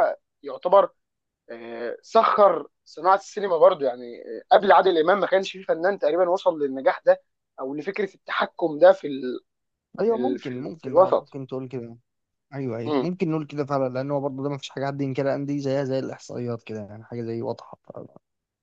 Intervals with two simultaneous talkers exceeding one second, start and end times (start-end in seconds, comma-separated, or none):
10.0-11.4